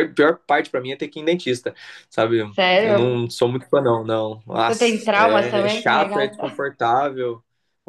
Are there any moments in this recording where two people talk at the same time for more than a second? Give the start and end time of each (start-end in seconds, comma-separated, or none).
4.7-6.6